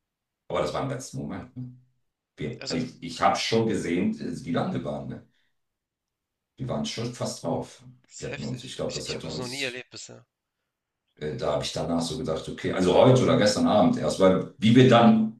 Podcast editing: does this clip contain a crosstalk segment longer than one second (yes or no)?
yes